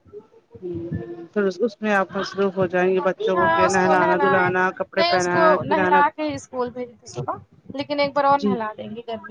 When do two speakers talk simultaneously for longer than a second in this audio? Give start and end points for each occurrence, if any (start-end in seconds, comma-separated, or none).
3.3-6.0